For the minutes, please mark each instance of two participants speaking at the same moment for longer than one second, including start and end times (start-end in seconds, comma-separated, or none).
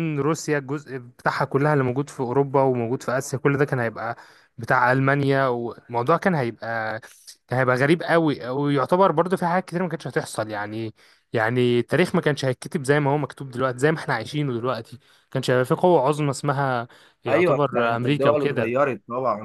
17.3-18.9